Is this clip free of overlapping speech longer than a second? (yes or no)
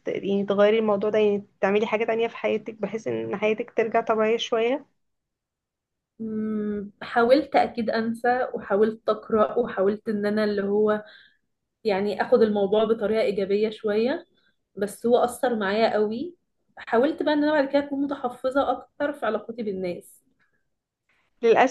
yes